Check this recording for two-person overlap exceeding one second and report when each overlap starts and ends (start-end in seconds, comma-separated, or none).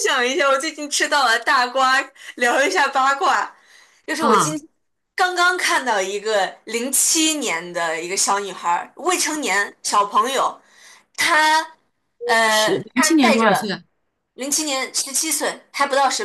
12.5-13.7